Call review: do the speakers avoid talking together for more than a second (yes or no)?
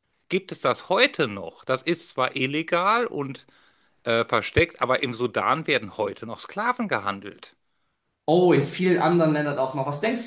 yes